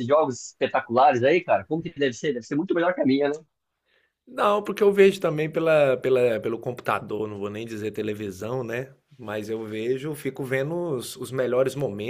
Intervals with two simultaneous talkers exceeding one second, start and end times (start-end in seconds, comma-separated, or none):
none